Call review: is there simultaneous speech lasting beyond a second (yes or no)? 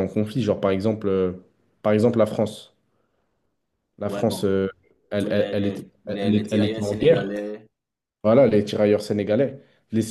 yes